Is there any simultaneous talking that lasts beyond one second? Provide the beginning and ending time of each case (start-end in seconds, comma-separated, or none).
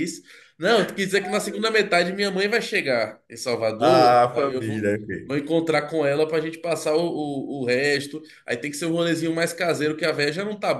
3.8-5.4